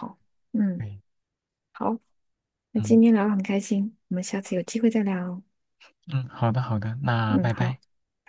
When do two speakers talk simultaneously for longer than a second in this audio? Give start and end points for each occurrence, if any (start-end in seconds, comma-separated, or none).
none